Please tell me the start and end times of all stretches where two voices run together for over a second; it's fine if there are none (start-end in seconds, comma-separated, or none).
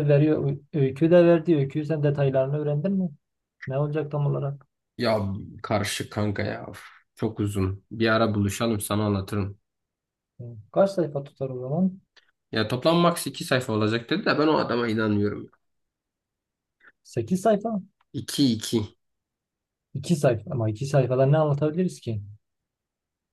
none